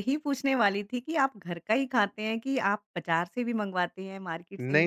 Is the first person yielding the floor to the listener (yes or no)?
yes